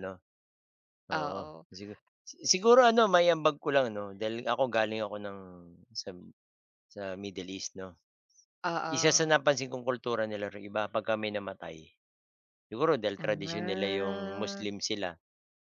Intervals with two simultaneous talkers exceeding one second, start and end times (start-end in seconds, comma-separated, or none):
13.2-14.7